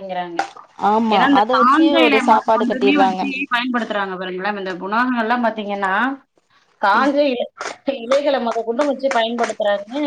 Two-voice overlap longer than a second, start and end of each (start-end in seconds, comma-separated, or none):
1.1-3.2